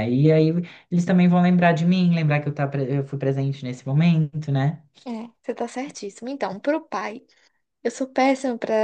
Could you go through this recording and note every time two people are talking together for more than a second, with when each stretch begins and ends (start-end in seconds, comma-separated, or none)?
none